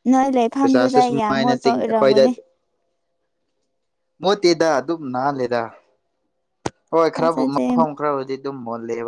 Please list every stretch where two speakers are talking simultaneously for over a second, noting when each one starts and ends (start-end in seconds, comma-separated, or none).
0.6-2.2